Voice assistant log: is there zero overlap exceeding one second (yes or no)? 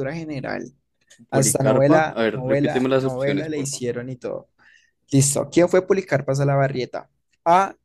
no